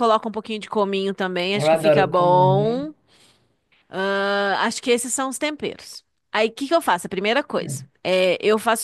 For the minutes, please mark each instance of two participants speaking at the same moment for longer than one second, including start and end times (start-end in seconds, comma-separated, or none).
1.5-2.8